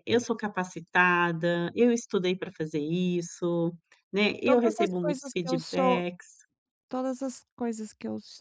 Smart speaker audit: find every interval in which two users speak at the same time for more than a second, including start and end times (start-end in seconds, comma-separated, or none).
4.5-6.0